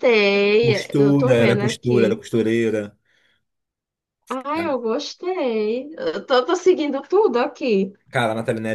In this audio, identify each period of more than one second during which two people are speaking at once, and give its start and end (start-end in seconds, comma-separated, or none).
0.6-2.2